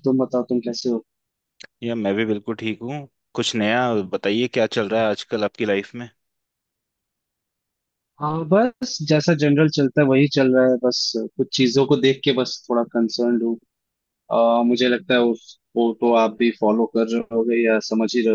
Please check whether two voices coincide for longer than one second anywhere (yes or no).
no